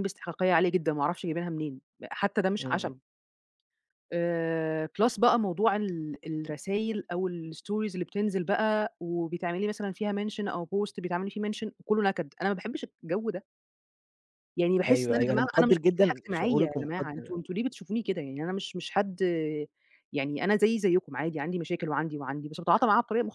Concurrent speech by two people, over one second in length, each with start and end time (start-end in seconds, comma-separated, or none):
14.9-17.3